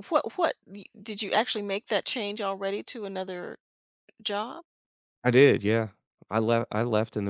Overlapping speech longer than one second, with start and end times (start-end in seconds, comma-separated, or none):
none